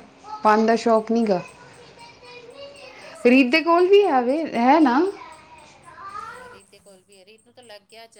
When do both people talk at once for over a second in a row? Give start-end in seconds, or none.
3.3-4.6